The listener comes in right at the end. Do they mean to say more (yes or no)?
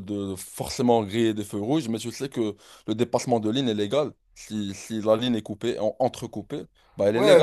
yes